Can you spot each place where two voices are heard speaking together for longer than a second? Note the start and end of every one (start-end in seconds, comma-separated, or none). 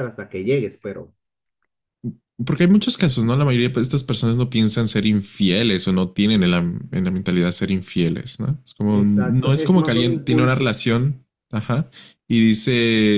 8.9-10.7